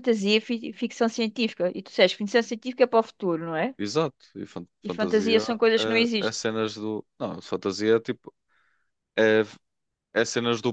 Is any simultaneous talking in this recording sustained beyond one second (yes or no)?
yes